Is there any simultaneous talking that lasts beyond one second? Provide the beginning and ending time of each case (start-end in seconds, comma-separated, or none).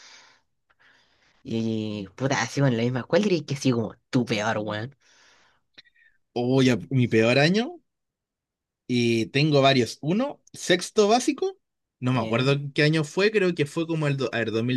none